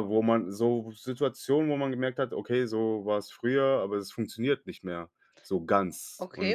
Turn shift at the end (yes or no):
yes